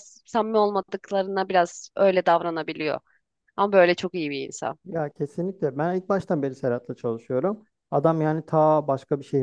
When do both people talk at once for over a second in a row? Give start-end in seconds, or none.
none